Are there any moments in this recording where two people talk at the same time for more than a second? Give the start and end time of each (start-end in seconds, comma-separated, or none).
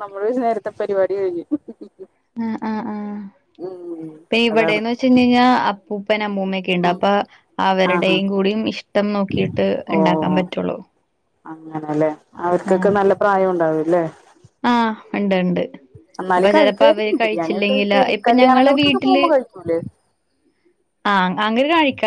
16.4-19.2